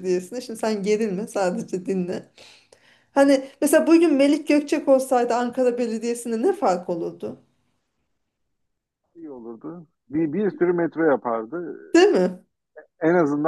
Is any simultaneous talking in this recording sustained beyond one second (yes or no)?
no